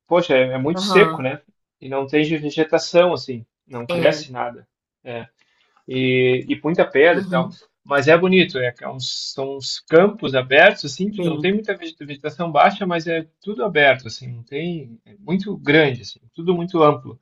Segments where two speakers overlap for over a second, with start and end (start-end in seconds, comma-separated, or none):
none